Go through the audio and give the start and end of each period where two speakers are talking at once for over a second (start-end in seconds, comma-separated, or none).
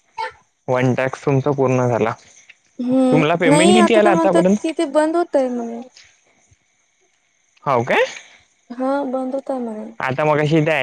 3.1-4.7